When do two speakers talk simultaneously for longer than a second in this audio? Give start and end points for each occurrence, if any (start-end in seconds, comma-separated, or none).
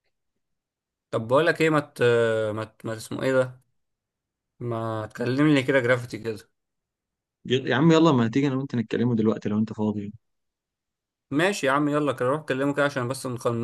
none